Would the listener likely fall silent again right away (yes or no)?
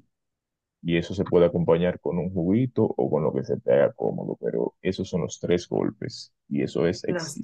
yes